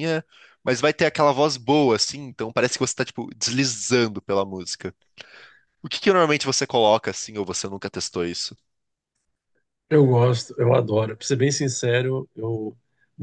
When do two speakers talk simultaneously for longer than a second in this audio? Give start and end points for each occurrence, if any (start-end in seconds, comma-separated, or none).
none